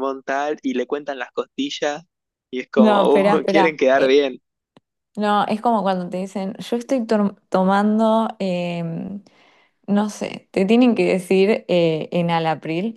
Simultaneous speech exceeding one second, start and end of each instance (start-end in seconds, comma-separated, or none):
2.8-4.2